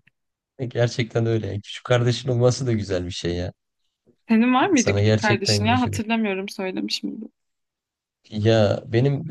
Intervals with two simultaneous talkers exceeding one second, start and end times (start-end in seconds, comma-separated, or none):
4.8-6.0